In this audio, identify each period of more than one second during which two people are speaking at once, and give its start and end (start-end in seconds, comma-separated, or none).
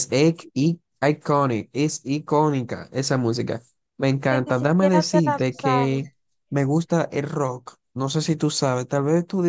4.3-6.1